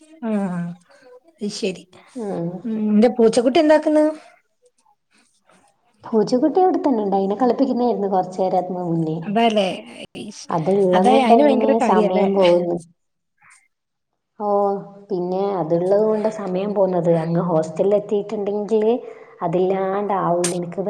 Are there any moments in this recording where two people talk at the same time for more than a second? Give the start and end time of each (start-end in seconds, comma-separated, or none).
none